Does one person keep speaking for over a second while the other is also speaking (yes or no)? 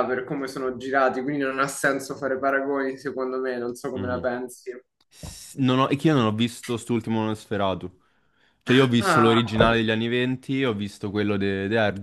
no